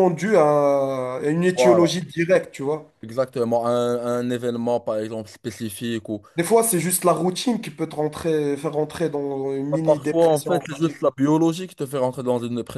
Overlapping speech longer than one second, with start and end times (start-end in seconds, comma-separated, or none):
9.7-10.9